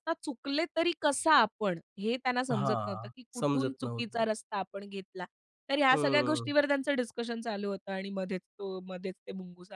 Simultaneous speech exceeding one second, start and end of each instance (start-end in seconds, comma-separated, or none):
2.5-4.2